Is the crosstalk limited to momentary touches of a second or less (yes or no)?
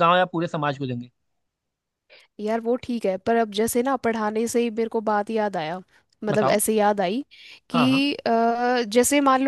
yes